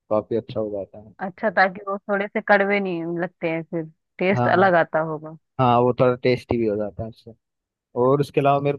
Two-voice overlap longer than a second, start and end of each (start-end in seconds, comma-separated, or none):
none